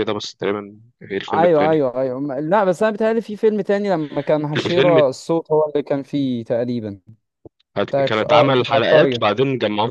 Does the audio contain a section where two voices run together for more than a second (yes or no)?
yes